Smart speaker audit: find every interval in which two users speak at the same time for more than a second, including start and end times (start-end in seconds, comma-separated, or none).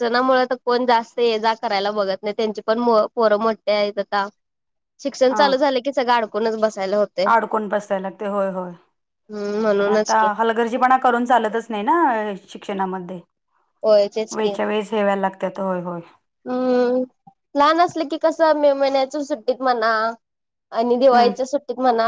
none